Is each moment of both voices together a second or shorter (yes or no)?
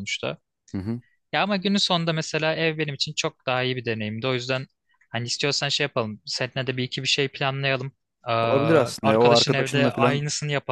no